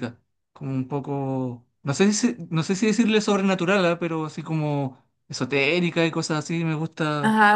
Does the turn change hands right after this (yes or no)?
yes